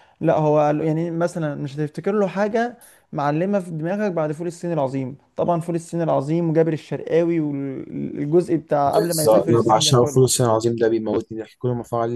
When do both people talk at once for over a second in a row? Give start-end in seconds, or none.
8.8-10.2